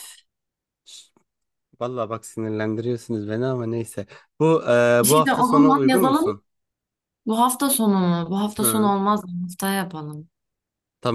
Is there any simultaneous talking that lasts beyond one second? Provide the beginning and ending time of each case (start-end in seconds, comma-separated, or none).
5.0-6.3